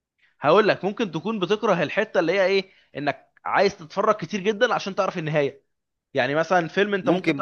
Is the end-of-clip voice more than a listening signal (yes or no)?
yes